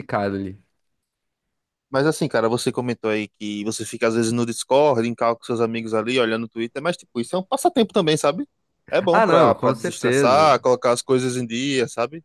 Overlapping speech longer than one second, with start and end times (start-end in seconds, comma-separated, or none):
9.1-10.5